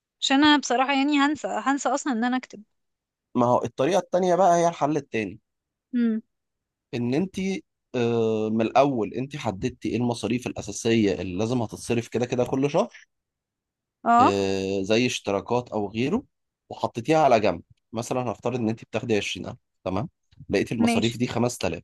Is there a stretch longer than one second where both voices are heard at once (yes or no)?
no